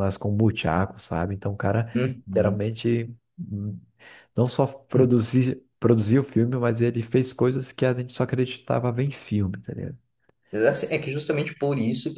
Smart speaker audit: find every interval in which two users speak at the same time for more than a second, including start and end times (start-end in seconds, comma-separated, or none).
none